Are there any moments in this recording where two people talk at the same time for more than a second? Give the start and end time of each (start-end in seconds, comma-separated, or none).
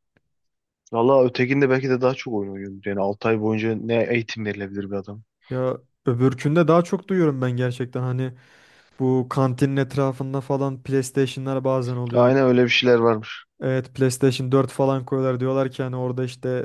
none